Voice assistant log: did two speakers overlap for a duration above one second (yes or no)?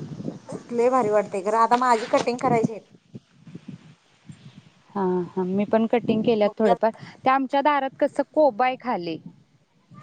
no